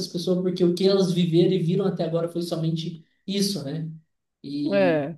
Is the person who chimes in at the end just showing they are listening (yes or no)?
yes